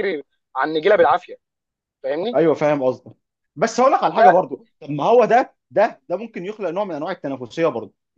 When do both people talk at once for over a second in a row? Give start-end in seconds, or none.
none